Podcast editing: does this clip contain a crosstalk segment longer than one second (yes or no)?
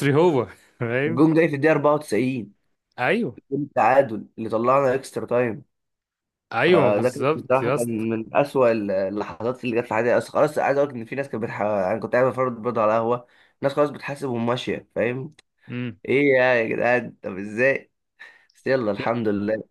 yes